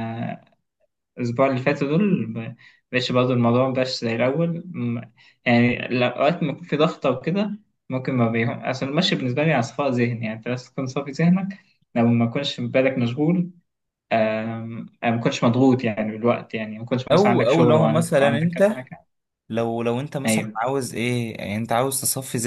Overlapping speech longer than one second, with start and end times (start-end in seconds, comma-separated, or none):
17.1-18.9